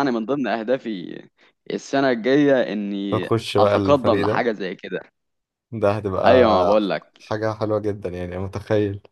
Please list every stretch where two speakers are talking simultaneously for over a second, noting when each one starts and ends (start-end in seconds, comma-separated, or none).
3.1-4.5